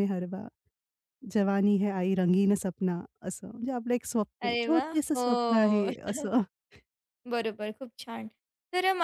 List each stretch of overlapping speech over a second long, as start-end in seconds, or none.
4.4-5.9